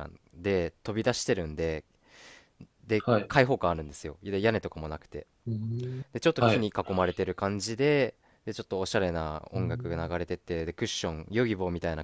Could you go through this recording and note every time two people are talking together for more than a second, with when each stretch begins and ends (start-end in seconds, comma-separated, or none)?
none